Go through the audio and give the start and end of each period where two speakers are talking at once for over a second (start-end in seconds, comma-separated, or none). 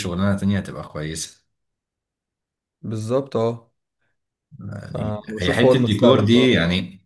4.8-6.6